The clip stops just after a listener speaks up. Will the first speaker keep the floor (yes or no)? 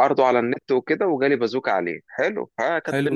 yes